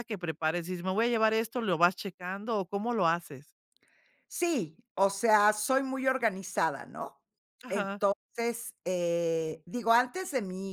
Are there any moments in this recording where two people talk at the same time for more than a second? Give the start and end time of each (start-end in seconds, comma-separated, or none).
none